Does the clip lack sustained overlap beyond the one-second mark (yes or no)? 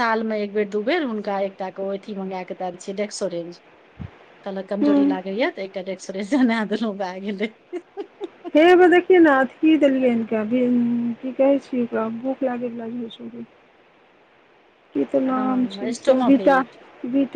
no